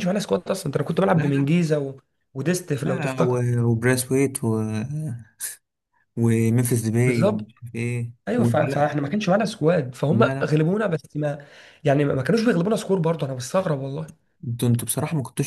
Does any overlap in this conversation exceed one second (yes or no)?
no